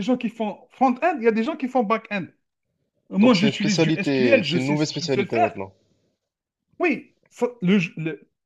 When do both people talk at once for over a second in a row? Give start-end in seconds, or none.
3.2-5.5